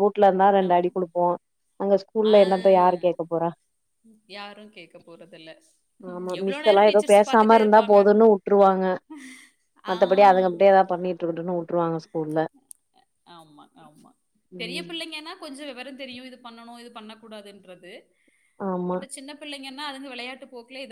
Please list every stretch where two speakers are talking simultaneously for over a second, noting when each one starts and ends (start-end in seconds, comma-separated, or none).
none